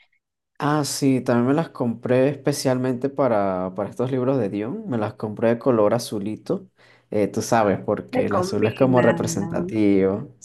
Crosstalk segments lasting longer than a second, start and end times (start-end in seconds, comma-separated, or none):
8.1-9.8